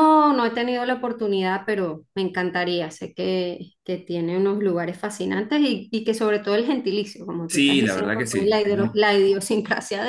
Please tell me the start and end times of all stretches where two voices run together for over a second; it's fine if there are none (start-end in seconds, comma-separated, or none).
7.5-9.0